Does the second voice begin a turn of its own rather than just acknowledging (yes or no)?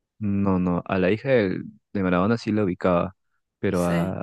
no